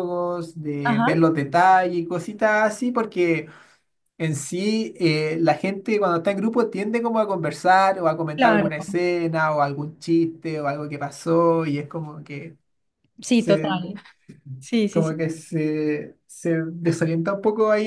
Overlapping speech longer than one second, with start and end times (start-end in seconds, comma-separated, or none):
none